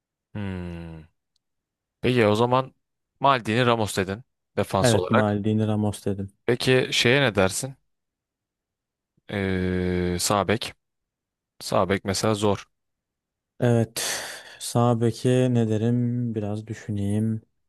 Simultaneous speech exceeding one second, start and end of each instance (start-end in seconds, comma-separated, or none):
none